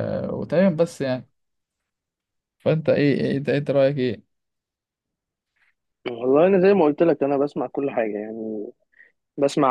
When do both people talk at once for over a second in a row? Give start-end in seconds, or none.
none